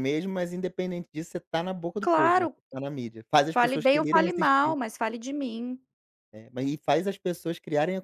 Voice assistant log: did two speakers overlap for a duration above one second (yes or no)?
yes